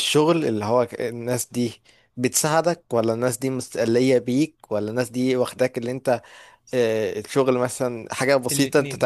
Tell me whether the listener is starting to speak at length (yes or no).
yes